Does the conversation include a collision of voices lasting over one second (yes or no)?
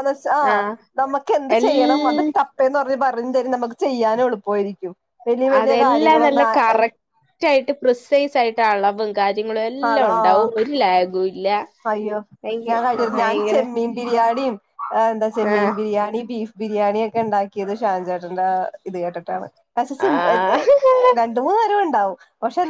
no